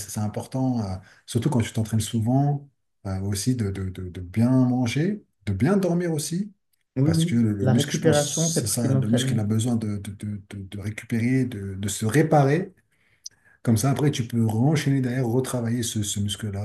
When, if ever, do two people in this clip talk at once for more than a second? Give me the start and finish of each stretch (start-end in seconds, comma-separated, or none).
7.0-9.4